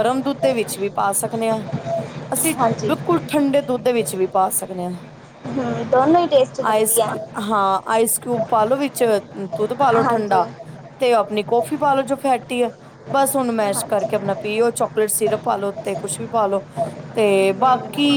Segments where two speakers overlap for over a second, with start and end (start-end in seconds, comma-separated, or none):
none